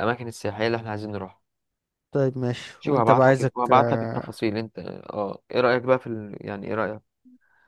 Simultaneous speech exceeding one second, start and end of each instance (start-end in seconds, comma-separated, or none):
2.8-4.3